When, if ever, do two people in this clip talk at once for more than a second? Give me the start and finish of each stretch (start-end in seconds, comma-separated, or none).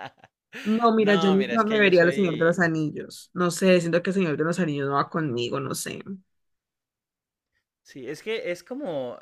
1.0-2.6